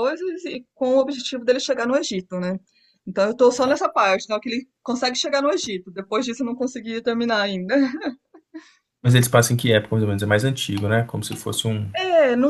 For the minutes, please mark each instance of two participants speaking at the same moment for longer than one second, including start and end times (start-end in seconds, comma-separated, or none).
none